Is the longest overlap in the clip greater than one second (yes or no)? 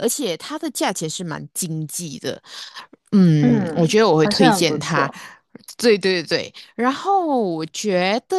yes